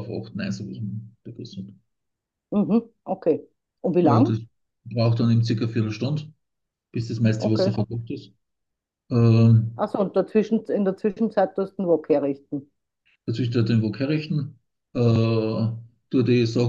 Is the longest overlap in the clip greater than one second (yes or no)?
no